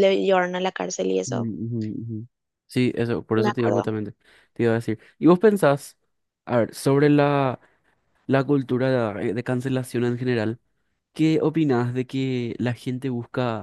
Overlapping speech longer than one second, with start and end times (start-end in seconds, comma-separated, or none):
none